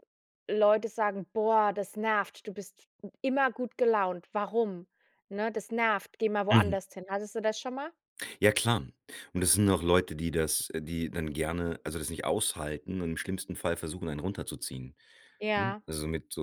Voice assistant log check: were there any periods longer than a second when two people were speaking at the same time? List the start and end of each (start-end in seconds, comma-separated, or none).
none